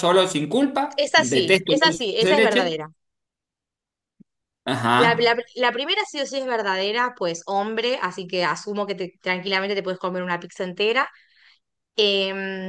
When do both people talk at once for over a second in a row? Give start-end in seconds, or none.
1.0-2.8